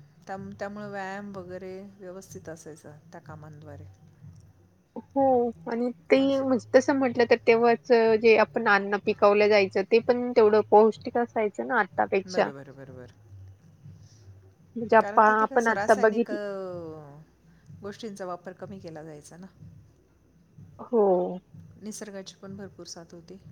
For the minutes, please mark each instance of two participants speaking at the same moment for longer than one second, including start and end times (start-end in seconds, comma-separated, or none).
15.0-16.4